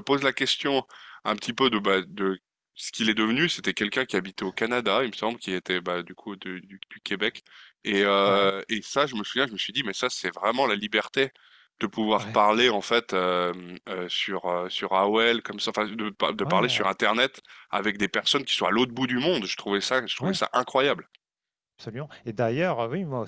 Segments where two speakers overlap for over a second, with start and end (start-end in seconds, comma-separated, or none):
none